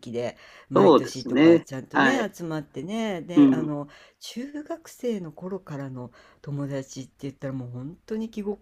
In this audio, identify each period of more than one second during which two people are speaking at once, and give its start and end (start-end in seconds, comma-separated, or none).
0.7-2.3